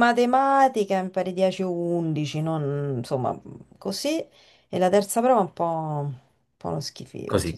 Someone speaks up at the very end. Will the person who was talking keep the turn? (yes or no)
no